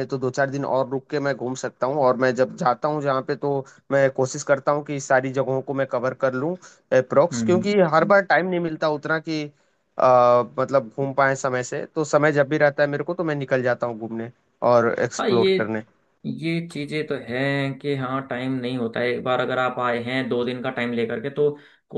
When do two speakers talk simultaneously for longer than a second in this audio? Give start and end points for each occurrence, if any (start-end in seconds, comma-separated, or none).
none